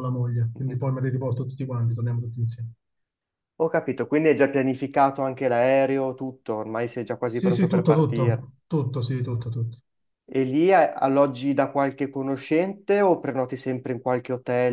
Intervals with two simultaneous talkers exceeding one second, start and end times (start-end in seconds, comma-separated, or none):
7.3-8.5